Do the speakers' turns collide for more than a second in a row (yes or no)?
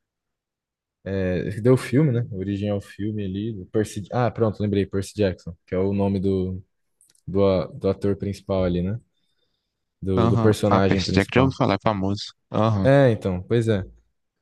yes